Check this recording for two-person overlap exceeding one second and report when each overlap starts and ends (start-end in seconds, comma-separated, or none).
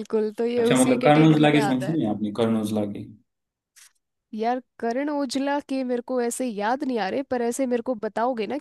0.6-2.0